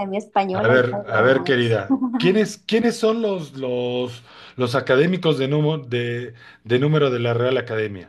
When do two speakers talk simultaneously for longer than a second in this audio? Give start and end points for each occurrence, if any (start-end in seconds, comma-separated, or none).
0.5-1.8